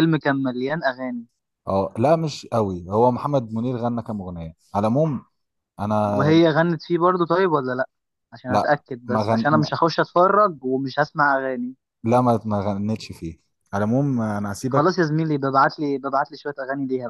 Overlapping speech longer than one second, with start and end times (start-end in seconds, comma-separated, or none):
8.5-9.9